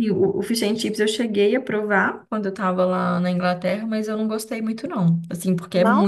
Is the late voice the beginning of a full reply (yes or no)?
no